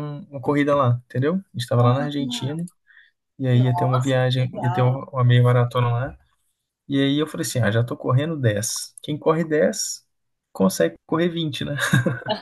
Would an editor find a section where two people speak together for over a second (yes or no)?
yes